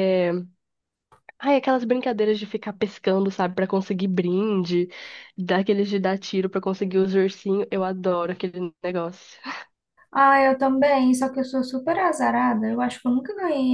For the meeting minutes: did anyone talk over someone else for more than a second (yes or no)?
no